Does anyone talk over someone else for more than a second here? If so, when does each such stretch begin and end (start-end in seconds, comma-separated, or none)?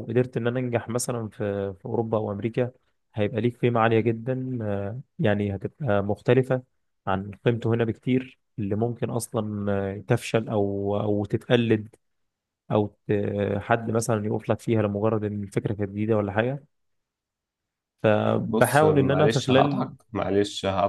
18.5-19.9